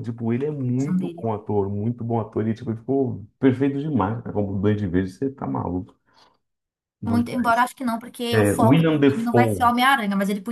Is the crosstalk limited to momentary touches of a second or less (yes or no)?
no